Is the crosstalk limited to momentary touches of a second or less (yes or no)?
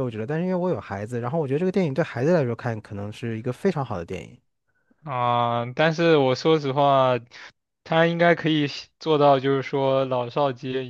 yes